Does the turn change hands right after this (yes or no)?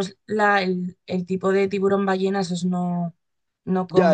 yes